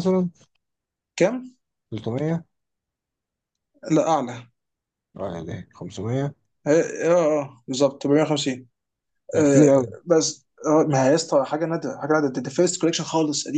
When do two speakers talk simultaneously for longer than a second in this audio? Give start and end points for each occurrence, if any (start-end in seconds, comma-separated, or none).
none